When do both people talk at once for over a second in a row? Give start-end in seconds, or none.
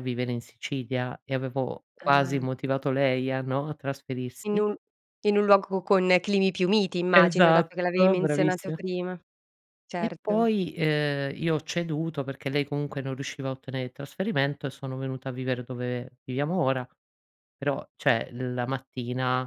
7.1-8.8